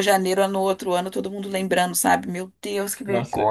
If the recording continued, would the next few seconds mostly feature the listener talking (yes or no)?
yes